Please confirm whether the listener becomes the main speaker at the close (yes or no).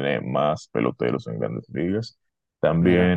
no